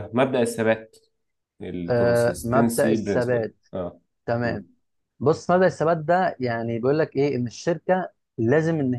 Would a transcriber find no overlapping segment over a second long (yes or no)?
no